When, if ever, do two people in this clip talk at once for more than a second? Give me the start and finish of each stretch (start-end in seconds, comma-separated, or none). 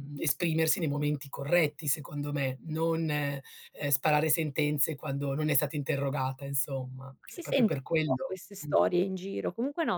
7.2-8.7